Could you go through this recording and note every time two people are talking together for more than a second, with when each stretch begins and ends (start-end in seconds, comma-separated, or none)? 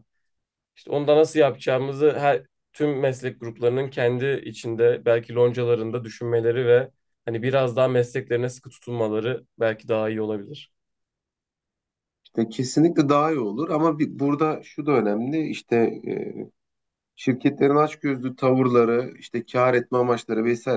none